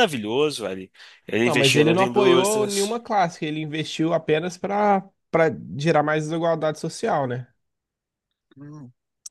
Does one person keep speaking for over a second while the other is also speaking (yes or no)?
yes